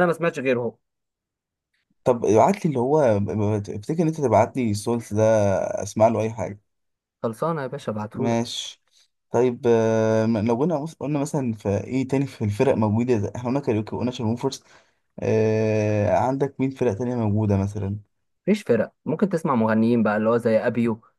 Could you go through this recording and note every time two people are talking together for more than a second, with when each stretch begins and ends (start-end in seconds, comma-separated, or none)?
none